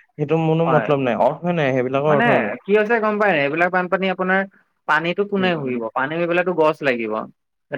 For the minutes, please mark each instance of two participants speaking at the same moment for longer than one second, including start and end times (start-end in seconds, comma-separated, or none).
none